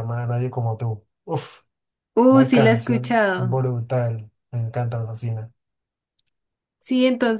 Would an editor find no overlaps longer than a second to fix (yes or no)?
no